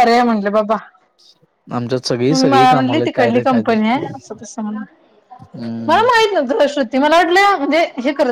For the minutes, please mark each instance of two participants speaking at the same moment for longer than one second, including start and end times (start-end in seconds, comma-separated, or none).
2.3-4.1